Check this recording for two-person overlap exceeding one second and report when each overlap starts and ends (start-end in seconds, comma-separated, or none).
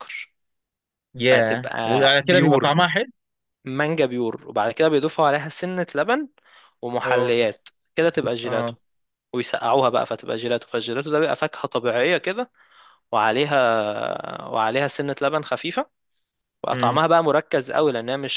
1.2-2.8